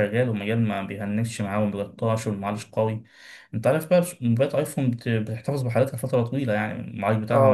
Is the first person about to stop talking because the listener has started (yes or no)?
no